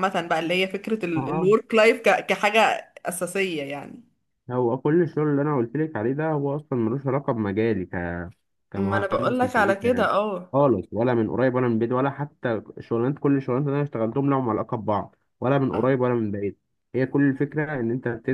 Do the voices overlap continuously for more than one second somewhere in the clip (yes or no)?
yes